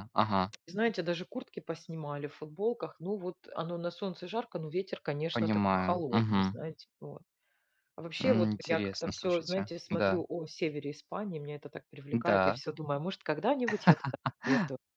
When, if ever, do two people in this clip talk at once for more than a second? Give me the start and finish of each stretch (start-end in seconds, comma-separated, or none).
5.3-6.6, 8.2-10.2